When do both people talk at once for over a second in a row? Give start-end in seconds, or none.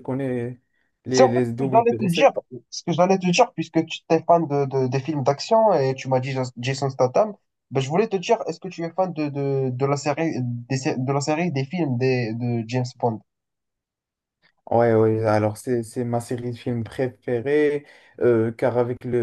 1.1-2.3